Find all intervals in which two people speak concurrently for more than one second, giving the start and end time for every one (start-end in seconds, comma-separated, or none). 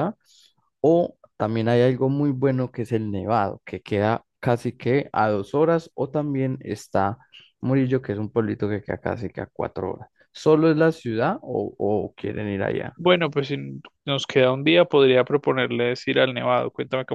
none